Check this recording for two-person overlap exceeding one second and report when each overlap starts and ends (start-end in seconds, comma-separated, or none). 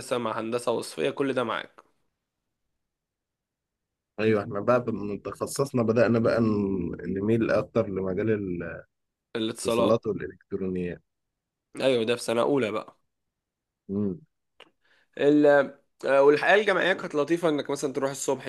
none